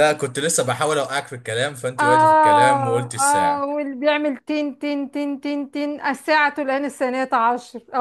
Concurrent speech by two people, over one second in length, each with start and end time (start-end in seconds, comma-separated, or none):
2.0-3.6